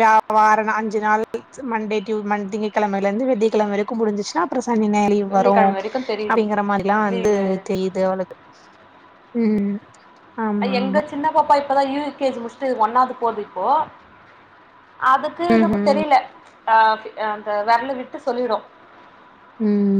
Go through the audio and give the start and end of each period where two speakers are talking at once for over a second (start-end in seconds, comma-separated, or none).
none